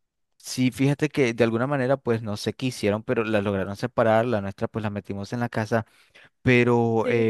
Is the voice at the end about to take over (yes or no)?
no